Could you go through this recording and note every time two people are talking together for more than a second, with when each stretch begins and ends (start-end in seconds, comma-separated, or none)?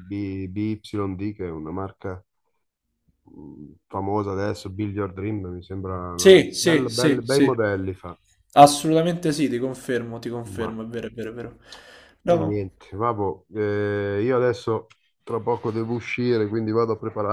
6.1-7.5